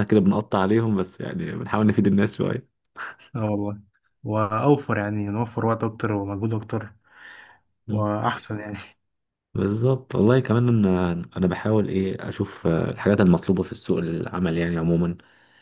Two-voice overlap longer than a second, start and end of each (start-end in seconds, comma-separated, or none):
none